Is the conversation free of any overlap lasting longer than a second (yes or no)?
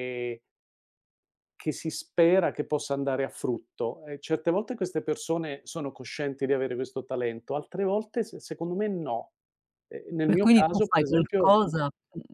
no